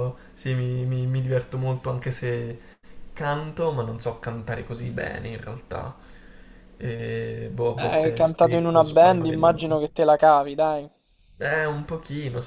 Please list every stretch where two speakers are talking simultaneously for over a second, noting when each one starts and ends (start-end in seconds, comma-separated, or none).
7.8-9.8